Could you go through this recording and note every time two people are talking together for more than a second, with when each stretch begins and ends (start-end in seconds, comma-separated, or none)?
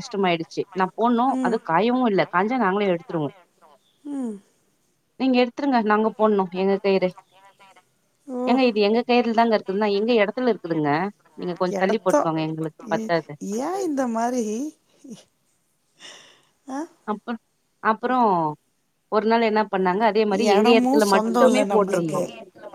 20.5-22.2